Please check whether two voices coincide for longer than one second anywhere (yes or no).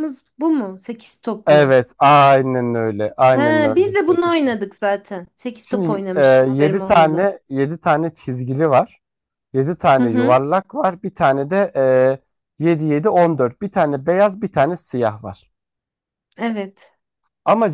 yes